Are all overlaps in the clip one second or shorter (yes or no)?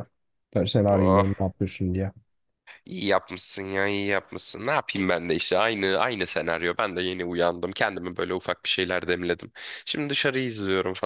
yes